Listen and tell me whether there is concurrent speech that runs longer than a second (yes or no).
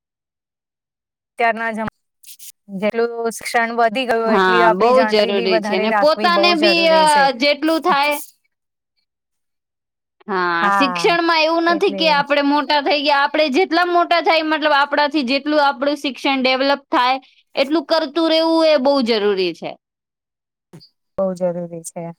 yes